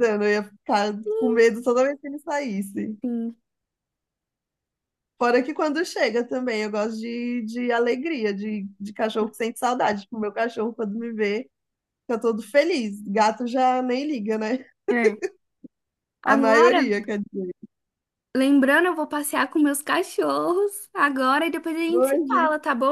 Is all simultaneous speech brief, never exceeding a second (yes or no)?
yes